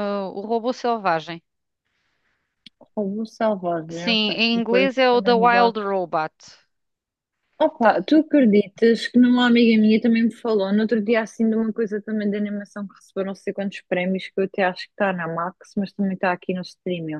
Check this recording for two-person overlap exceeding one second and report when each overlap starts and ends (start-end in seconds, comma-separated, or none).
3.9-5.9